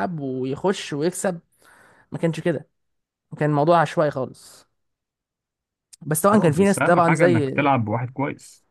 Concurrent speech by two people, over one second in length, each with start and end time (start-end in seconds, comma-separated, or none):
6.3-7.5